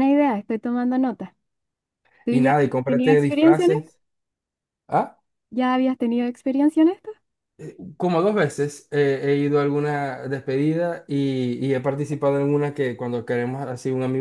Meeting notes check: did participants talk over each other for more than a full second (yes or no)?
yes